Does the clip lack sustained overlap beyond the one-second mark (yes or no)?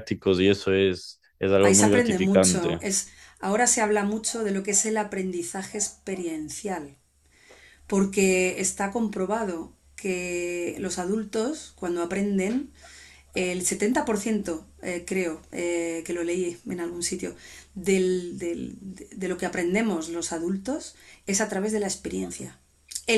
no